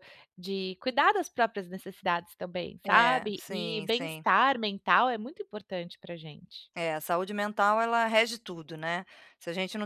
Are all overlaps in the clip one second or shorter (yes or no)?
no